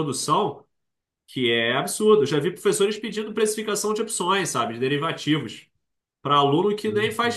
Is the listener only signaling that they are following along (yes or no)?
yes